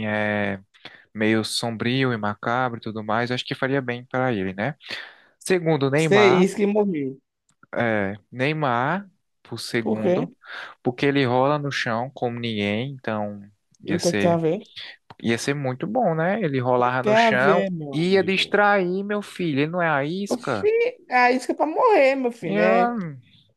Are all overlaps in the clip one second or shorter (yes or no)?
no